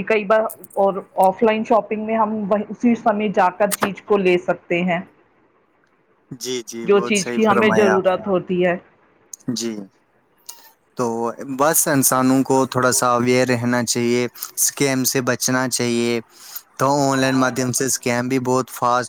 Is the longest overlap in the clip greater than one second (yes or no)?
yes